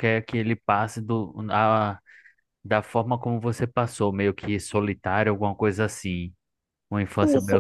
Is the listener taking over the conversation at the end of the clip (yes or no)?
yes